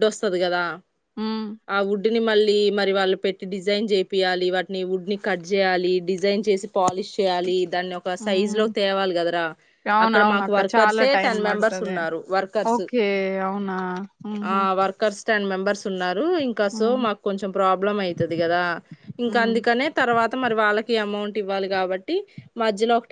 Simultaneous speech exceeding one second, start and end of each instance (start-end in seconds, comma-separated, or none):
10.1-12.0